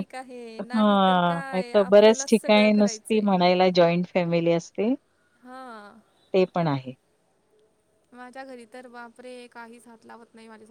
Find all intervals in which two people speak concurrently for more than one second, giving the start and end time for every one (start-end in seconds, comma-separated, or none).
1.5-3.3